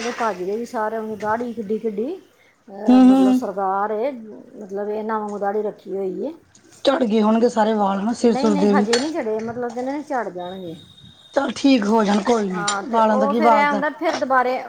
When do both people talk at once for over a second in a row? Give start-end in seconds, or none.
12.5-13.8